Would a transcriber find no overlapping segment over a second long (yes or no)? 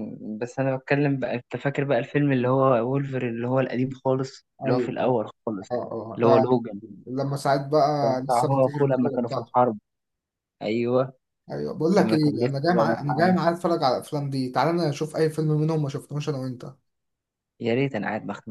no